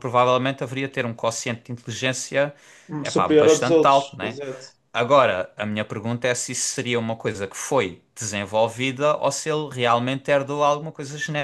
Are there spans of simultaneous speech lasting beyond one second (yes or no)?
yes